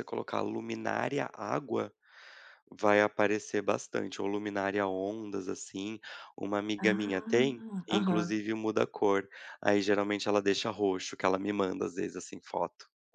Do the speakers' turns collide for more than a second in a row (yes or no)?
yes